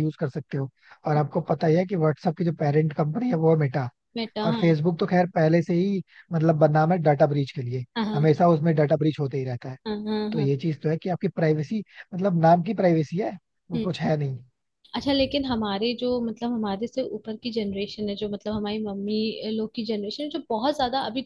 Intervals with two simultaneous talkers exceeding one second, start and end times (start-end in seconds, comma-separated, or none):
none